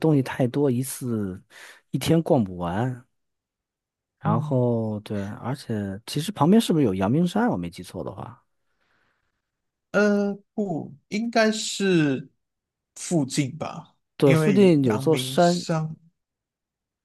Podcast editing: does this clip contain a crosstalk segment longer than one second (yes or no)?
yes